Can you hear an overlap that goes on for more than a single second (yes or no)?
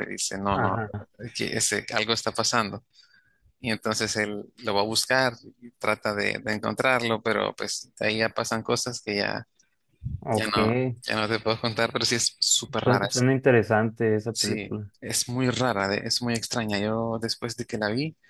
no